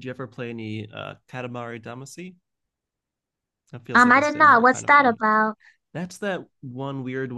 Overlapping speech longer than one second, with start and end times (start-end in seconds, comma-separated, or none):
3.9-5.2